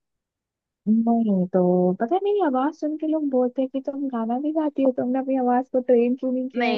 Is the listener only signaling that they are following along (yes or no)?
no